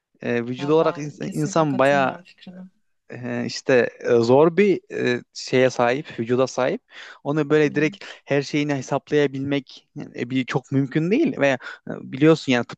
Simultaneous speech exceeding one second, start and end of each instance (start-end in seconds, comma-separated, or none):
0.6-2.2